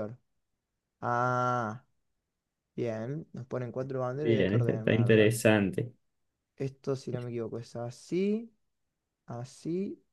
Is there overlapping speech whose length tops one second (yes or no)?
yes